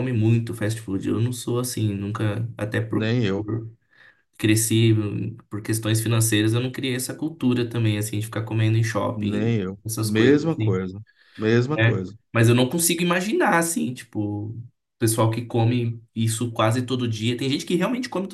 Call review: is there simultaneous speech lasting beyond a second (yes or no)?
yes